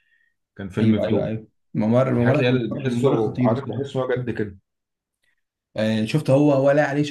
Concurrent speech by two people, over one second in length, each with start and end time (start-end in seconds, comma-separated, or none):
2.2-4.0